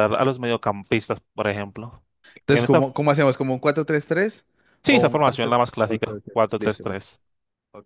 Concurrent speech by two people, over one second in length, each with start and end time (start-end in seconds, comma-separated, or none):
4.8-7.1